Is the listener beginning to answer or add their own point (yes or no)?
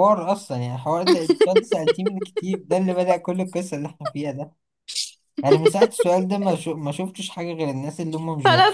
yes